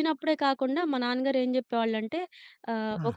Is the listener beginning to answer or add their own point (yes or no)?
no